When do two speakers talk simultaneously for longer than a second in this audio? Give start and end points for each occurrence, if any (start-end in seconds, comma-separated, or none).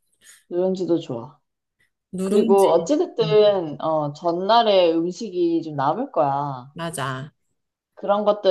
2.2-3.6